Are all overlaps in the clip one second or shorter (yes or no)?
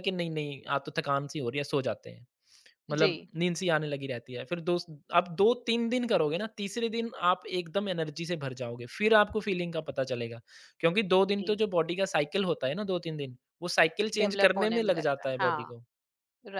no